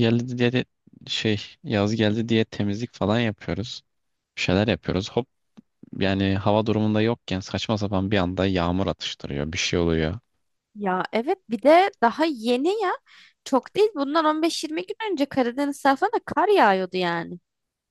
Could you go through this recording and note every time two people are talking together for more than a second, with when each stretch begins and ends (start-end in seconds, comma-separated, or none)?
none